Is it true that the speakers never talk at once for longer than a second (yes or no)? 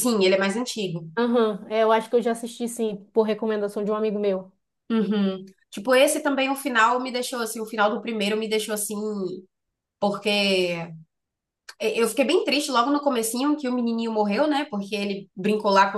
yes